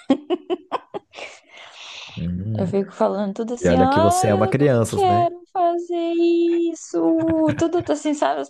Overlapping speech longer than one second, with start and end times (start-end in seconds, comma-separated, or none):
3.6-5.3